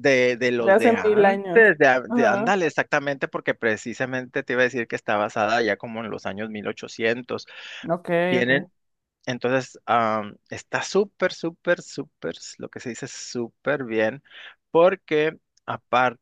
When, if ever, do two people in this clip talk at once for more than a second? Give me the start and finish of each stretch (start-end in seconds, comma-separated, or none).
0.6-2.5